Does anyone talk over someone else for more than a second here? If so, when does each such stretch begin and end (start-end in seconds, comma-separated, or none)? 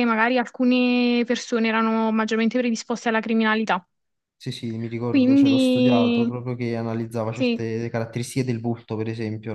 5.0-6.3